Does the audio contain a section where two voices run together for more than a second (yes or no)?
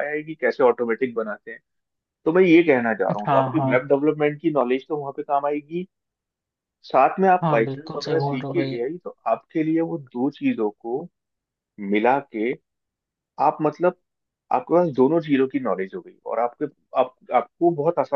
yes